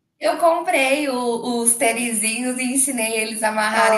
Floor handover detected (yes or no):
no